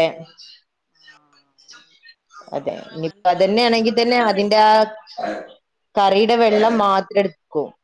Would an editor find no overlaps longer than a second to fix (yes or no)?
no